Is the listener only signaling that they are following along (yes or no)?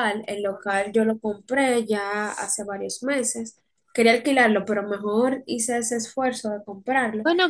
no